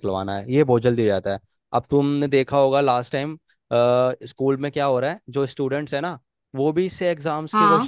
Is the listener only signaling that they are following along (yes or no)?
yes